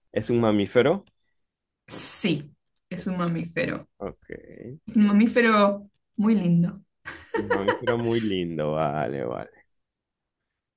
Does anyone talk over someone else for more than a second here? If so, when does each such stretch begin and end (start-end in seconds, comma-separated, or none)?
none